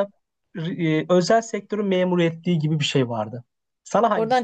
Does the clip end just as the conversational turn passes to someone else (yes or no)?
yes